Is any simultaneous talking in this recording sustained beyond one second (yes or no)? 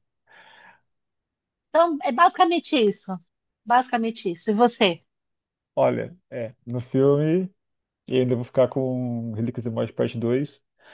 no